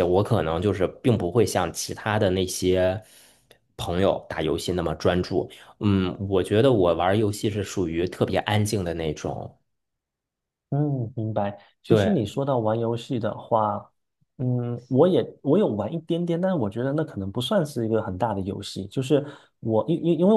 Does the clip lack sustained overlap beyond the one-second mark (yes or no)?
yes